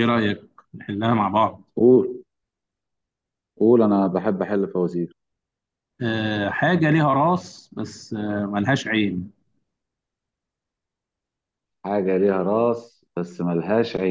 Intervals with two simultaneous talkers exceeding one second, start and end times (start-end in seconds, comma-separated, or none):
none